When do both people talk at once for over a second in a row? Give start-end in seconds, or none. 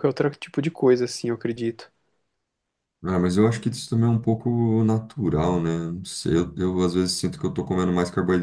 none